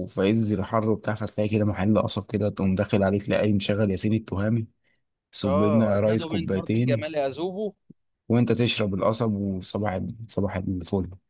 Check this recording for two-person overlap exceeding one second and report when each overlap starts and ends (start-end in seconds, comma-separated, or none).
5.4-7.1